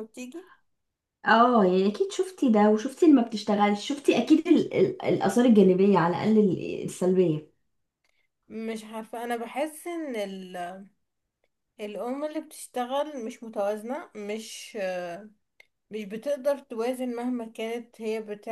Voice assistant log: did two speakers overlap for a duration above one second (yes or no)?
no